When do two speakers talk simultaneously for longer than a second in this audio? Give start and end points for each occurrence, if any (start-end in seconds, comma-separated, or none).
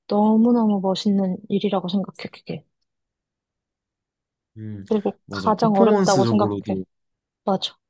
5.3-6.8